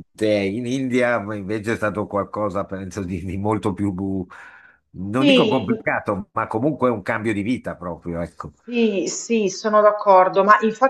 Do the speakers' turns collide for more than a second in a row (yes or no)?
no